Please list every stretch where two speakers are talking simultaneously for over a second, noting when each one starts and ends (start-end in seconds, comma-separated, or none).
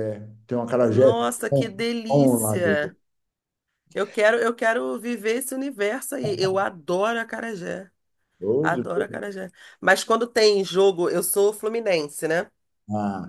0.9-2.7